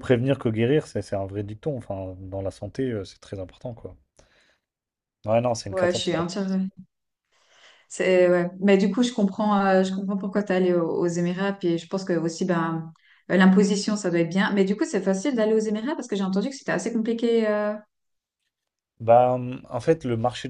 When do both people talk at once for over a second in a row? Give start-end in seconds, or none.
none